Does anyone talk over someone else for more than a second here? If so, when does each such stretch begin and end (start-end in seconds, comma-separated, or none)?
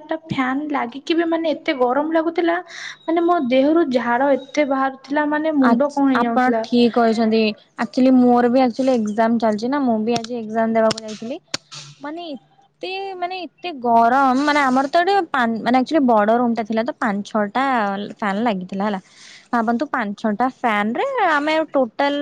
none